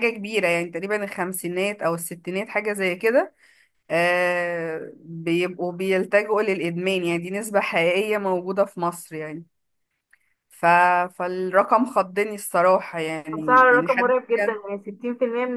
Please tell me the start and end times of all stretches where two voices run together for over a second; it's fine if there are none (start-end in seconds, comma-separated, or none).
13.3-14.6